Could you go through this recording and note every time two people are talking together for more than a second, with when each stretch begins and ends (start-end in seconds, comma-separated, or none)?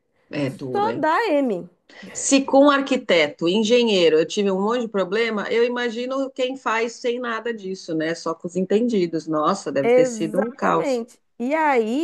9.8-11.1